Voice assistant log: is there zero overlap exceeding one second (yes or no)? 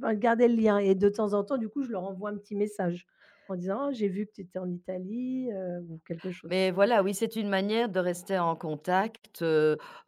yes